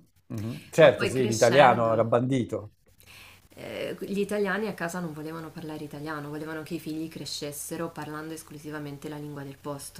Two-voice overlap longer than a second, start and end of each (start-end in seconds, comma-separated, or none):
0.8-2.2